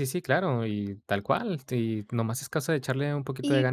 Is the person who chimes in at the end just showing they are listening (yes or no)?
no